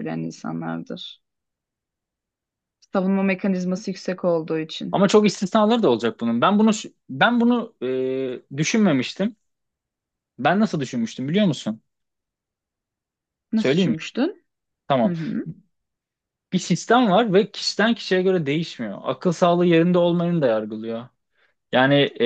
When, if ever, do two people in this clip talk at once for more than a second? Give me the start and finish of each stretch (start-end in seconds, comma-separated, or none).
none